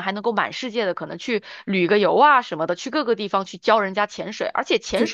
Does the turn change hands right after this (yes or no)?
no